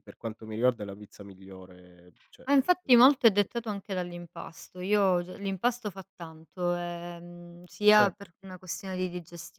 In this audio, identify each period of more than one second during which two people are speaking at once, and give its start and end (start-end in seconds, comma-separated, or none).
none